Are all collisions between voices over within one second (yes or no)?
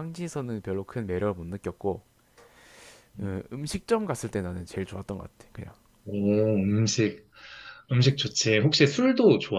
yes